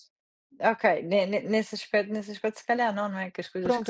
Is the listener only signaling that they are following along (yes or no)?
no